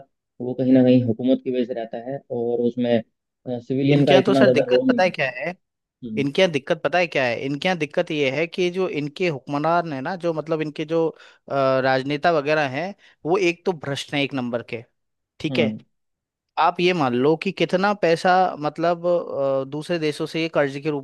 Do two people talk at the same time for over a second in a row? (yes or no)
yes